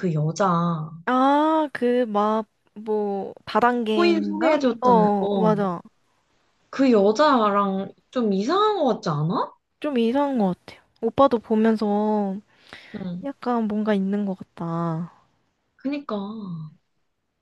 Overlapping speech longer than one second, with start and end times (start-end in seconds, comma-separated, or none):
3.9-5.6